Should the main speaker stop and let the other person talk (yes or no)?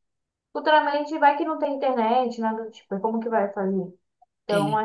no